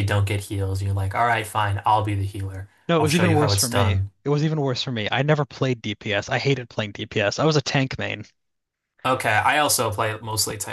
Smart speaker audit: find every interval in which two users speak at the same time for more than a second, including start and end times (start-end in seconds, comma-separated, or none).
2.9-4.1